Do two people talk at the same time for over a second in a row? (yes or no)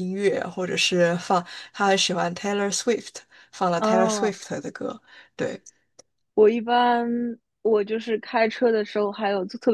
no